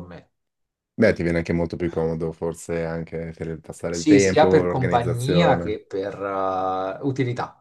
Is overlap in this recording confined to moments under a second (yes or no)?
no